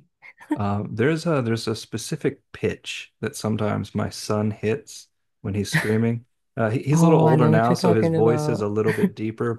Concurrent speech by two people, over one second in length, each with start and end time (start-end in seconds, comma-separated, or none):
6.9-8.7